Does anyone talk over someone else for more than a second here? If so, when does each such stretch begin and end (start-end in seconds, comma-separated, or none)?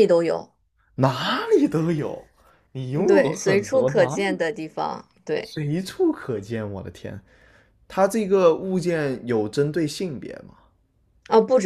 2.9-4.4